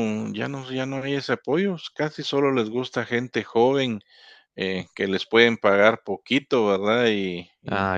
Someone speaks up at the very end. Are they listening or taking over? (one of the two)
taking over